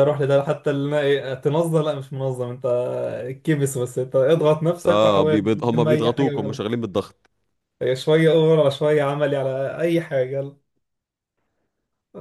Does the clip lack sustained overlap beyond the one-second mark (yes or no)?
no